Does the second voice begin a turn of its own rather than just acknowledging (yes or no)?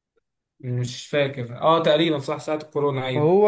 yes